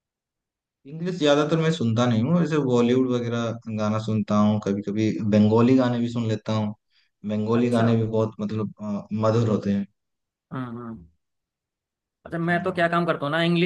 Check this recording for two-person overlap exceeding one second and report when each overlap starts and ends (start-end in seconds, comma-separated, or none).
none